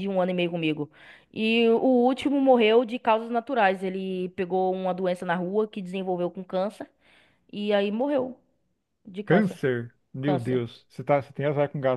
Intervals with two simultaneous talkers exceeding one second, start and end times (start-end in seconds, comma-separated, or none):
none